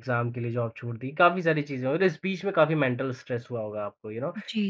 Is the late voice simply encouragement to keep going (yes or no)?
yes